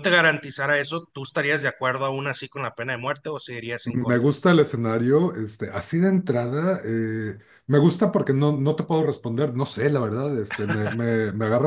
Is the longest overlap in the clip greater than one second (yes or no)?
no